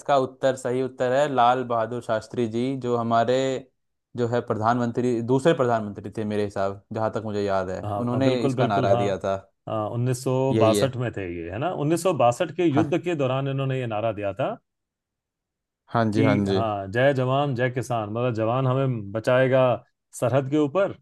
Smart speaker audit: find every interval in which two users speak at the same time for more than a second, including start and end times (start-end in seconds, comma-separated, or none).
7.8-9.4